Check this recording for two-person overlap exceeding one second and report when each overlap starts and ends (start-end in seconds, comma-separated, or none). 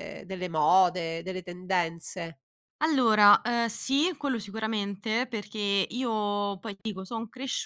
none